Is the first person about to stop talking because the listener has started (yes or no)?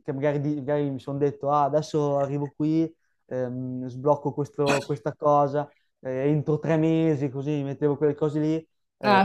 no